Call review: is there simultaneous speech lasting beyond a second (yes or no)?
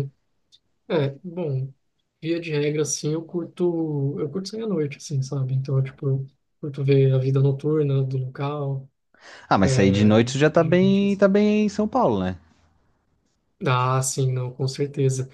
yes